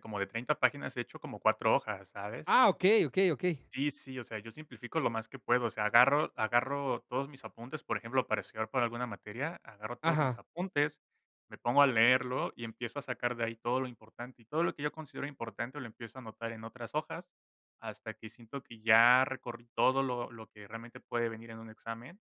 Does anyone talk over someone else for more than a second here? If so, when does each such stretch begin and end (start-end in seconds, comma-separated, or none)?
none